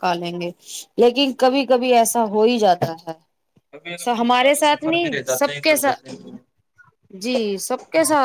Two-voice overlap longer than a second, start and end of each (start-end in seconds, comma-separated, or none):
4.0-6.3